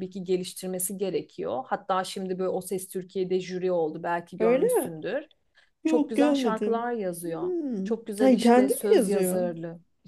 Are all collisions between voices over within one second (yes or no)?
no